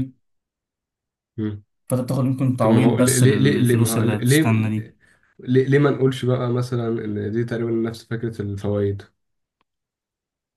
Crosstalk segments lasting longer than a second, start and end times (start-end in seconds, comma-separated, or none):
2.6-4.4